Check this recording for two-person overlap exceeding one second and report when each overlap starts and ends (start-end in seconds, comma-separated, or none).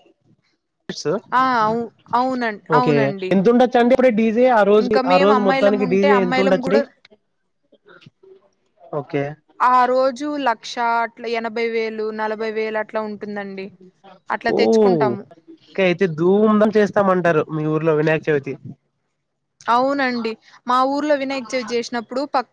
4.8-6.8